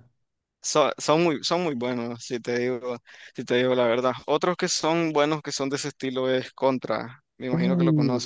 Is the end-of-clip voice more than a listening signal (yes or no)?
yes